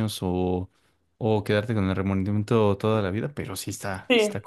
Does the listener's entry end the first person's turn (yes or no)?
yes